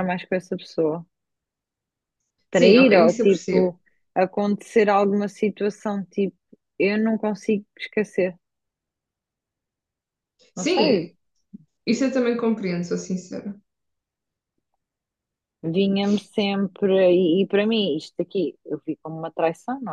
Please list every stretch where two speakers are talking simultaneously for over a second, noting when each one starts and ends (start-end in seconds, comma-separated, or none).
2.5-3.8